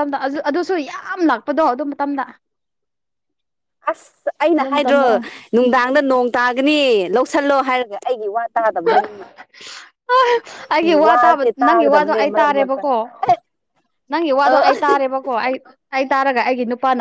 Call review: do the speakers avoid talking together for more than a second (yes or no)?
no